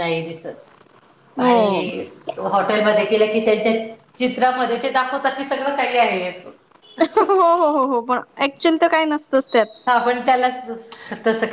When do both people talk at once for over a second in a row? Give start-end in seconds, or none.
none